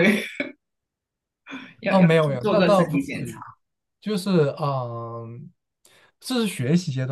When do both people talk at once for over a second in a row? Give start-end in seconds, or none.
1.9-3.4